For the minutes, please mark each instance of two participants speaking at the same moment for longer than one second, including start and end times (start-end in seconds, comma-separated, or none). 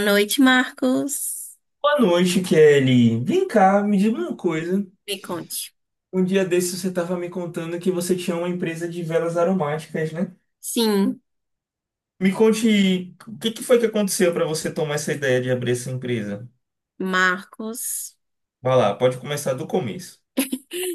none